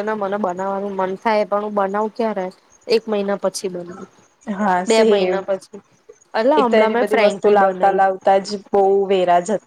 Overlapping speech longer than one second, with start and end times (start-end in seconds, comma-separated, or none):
6.6-8.0